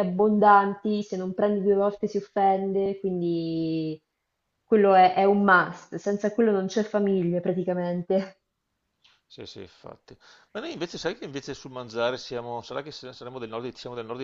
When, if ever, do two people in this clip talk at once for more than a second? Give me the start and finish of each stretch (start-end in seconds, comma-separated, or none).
none